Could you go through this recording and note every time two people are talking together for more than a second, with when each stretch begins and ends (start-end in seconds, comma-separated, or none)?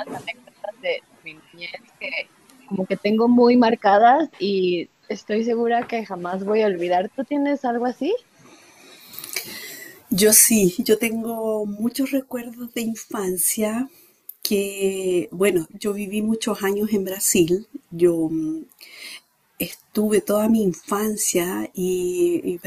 none